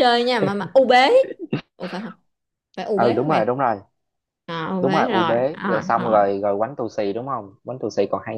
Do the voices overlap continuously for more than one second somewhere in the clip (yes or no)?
yes